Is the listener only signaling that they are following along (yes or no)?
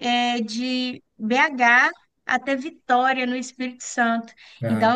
yes